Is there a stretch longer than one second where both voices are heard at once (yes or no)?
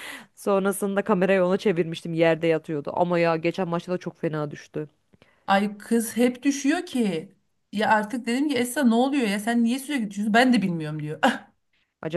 no